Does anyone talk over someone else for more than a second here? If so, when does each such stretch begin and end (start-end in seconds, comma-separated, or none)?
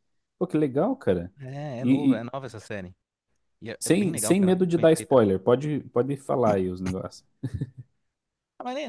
3.8-5.2